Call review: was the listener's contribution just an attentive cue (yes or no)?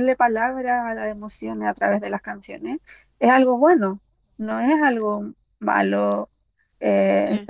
yes